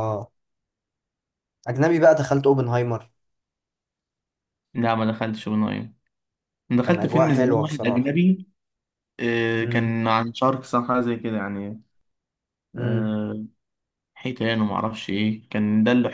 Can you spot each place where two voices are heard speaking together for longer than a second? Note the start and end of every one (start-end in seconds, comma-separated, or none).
6.8-8.1